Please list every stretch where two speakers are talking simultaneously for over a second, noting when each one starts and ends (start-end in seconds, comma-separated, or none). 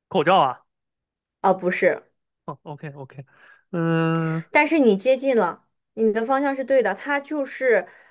none